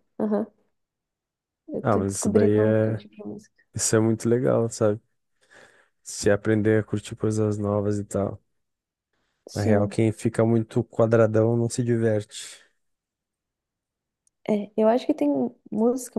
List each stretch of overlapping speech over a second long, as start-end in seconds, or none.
1.8-3.0